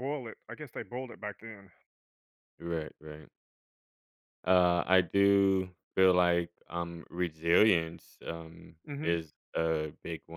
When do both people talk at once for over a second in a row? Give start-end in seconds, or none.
none